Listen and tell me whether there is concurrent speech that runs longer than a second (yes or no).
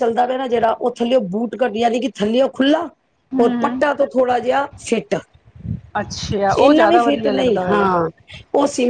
yes